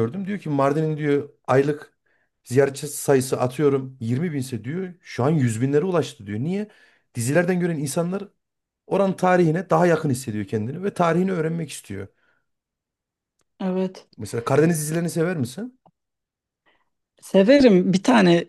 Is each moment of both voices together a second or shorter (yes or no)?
yes